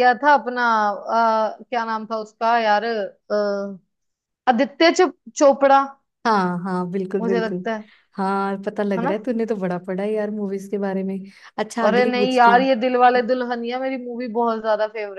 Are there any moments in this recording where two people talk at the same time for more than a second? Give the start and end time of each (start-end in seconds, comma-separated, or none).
11.9-13.3